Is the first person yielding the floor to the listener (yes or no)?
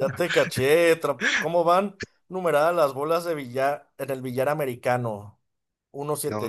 no